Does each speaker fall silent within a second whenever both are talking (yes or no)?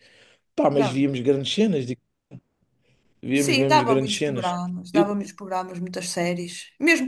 no